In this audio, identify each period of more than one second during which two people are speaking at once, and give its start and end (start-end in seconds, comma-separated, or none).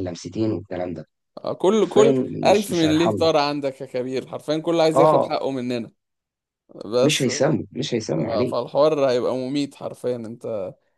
1.8-3.2